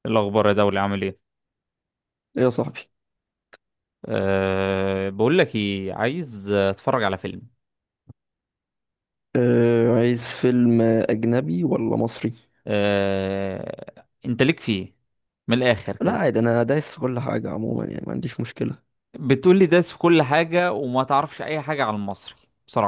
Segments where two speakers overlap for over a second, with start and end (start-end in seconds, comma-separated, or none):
none